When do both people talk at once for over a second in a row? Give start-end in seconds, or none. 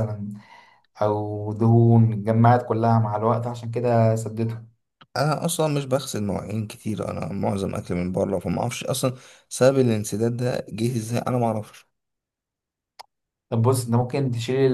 none